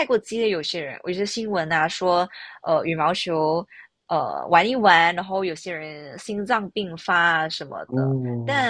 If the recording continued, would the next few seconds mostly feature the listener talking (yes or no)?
no